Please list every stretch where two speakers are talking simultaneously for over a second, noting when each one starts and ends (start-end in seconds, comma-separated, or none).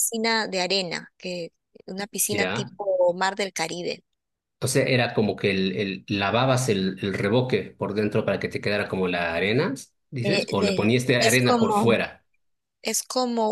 10.2-12.0